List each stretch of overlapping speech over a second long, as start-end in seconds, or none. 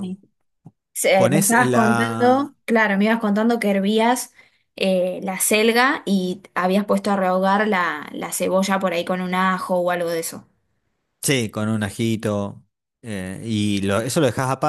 1.1-2.5